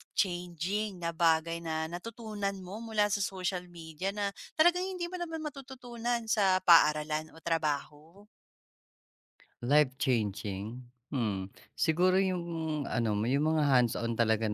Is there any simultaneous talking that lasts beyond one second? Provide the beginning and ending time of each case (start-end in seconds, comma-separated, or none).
none